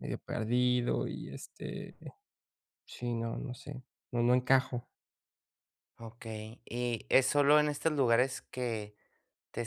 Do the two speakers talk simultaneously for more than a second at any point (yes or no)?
no